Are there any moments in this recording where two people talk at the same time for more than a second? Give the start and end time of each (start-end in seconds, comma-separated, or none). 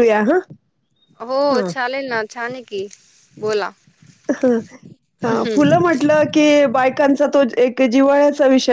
none